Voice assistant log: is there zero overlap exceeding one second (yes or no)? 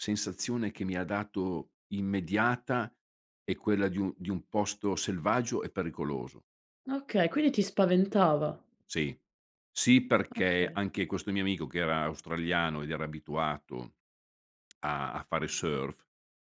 yes